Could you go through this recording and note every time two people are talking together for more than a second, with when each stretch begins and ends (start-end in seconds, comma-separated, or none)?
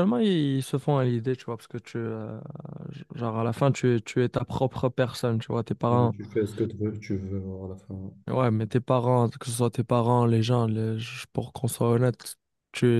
none